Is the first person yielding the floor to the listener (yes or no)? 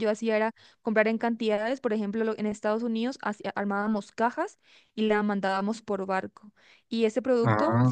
no